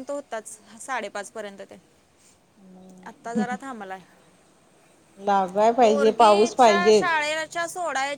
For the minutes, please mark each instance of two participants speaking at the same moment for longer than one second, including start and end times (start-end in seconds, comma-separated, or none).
5.8-7.1